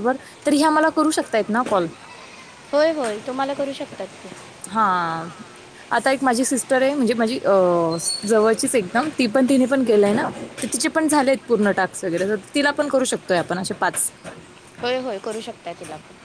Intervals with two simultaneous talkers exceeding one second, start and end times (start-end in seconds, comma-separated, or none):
none